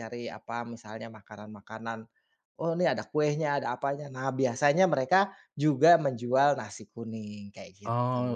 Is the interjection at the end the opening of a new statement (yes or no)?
yes